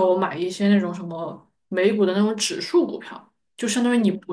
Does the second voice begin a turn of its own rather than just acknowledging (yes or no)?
no